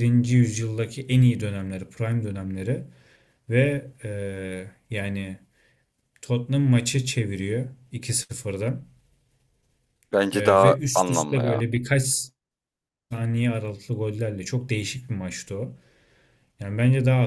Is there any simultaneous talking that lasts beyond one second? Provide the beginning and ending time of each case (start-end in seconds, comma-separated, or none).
10.3-11.7